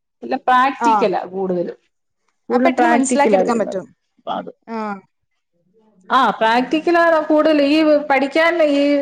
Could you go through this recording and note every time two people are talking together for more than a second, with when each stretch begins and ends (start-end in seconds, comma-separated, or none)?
2.5-3.8